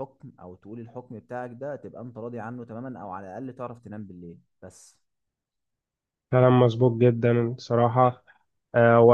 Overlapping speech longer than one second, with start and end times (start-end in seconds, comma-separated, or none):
none